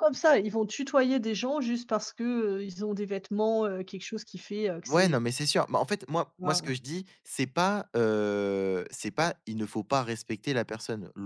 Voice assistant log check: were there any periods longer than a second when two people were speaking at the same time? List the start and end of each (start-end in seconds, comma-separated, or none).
none